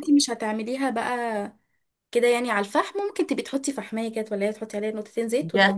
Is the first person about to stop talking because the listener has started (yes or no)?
yes